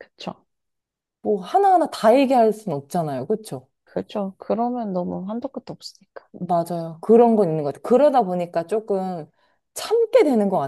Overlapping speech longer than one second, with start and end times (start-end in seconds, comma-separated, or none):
none